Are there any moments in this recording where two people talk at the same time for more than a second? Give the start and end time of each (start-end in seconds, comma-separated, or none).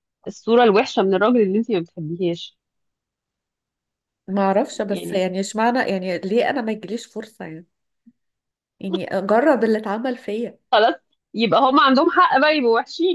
none